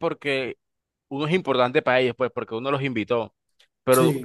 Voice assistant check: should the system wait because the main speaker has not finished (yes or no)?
yes